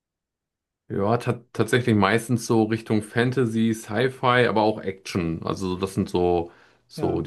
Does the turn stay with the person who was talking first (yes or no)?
yes